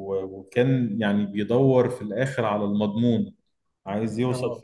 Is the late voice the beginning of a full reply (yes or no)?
no